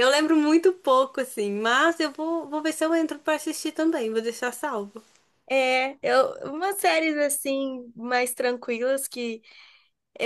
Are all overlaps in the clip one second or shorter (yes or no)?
yes